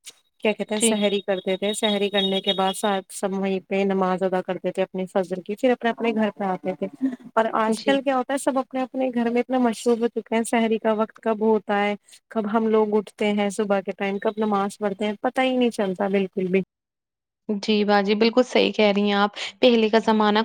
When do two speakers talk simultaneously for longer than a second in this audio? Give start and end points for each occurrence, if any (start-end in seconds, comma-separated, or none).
none